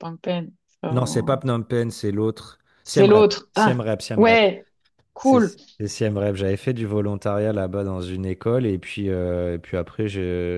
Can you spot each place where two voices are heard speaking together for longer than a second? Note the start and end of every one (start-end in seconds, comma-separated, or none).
2.8-4.5